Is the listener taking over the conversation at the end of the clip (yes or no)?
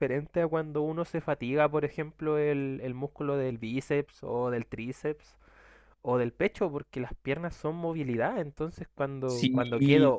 no